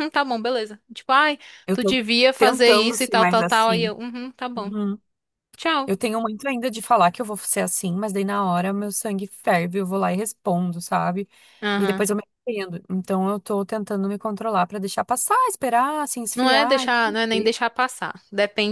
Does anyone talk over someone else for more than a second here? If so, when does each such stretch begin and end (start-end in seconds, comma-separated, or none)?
1.7-3.9, 16.3-17.5